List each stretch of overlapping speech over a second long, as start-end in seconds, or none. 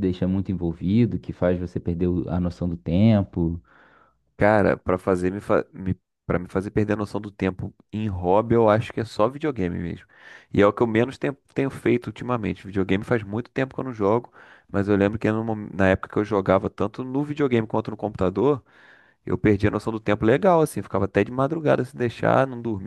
none